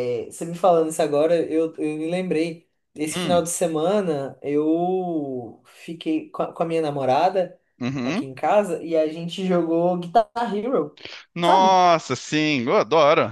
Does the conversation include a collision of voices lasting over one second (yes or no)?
no